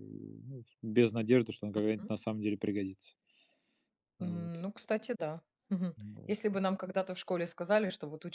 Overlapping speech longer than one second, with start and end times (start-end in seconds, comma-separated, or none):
none